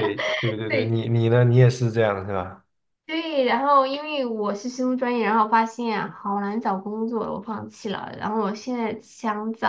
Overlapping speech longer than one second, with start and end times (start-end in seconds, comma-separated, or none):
none